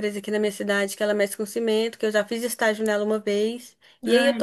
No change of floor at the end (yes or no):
yes